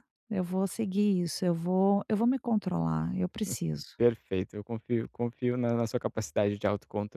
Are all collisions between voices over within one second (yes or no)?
yes